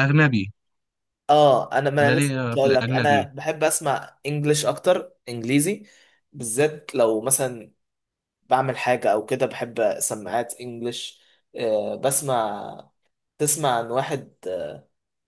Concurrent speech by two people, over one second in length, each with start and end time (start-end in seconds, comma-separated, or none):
2.0-3.3